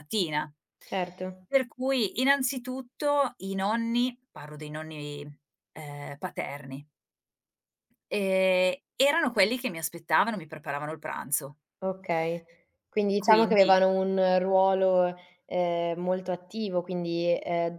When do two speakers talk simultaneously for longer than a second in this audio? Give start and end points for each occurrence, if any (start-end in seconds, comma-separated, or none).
none